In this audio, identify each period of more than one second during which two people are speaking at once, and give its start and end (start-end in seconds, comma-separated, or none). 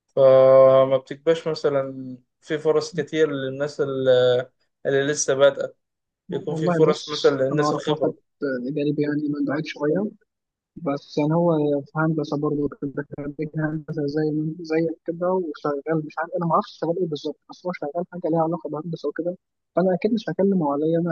6.5-8.1